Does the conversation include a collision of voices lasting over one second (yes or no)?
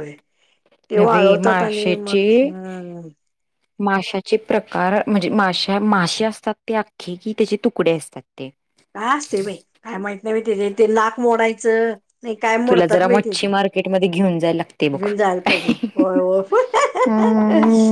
yes